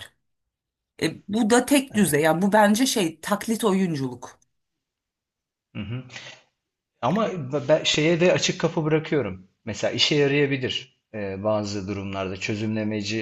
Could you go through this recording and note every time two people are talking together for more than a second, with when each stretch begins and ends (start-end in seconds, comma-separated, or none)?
none